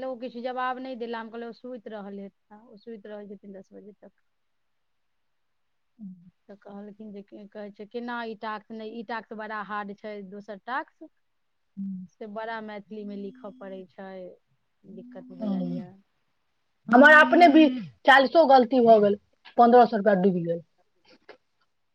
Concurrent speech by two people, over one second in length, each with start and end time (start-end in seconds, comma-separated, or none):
none